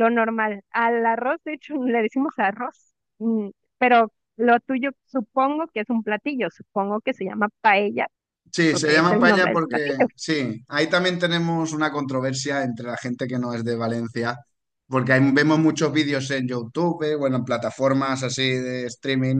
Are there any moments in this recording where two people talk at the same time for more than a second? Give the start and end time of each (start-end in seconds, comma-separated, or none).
8.7-10.1